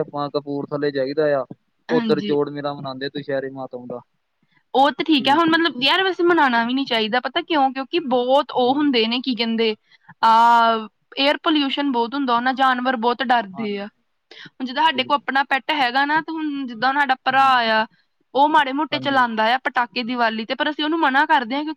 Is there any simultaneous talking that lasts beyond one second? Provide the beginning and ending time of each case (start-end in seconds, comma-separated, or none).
none